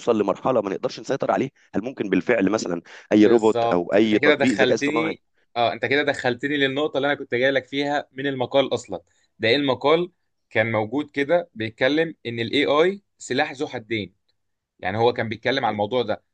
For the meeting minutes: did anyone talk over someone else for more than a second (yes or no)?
yes